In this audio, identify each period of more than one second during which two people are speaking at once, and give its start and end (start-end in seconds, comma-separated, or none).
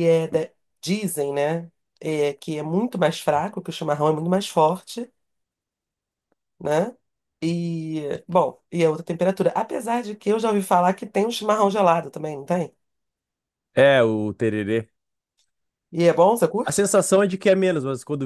none